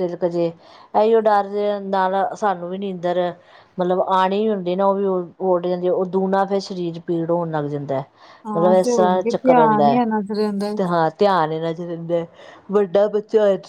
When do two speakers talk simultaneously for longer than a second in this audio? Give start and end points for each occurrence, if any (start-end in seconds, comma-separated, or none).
8.6-10.0